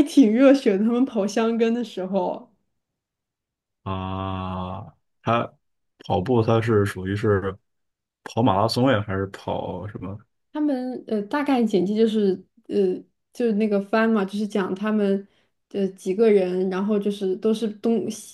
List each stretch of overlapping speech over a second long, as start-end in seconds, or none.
none